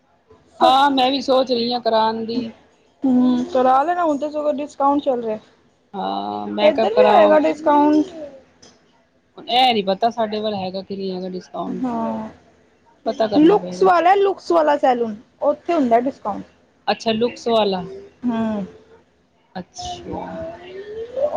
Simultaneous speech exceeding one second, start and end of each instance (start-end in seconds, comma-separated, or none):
6.0-7.3